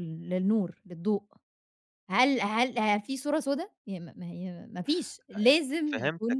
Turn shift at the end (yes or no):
yes